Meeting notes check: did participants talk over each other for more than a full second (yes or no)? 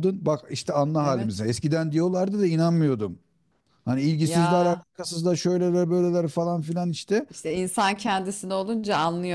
no